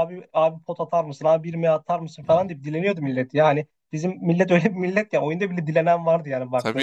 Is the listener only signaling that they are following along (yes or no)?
no